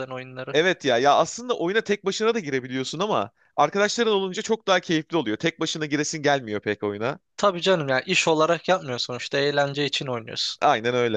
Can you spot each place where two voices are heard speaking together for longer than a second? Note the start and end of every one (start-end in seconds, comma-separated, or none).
none